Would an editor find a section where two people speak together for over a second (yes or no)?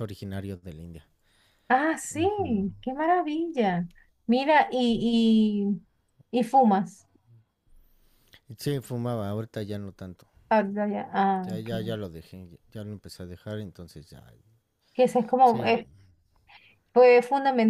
no